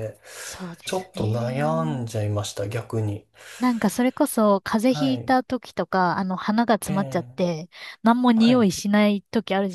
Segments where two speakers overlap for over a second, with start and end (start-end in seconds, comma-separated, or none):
0.8-2.1